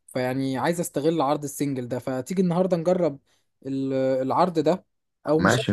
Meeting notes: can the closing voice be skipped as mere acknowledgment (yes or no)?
yes